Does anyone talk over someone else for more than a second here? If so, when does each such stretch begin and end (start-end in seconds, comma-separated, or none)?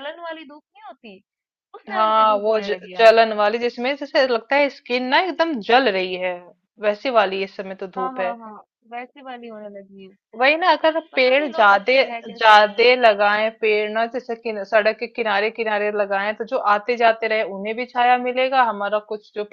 1.9-3.4, 11.1-13.1